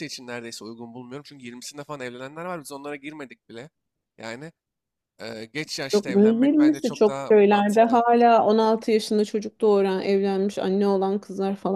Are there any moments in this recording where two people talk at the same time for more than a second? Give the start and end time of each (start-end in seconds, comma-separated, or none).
5.9-8.0